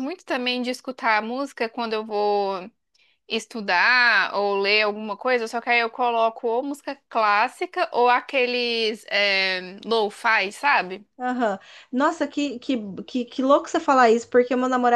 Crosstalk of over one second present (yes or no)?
no